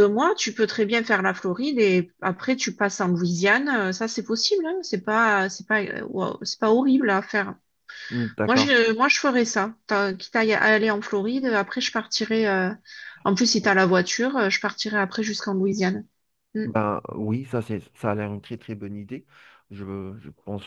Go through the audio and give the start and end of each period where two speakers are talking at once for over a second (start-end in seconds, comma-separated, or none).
none